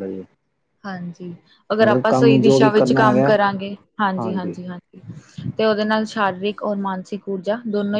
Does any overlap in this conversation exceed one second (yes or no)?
yes